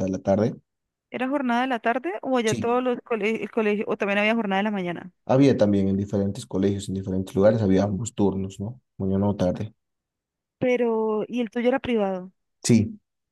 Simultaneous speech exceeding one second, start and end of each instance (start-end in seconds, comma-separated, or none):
none